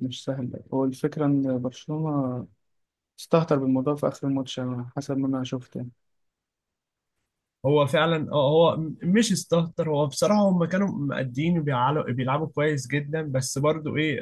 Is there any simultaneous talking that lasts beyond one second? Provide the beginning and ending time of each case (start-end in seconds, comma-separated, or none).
none